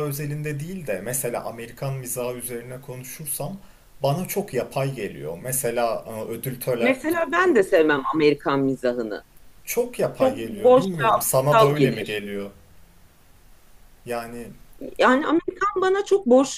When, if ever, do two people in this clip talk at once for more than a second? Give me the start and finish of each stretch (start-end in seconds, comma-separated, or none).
10.2-12.2